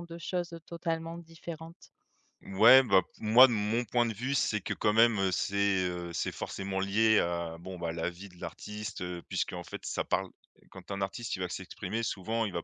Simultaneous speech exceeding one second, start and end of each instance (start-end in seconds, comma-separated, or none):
none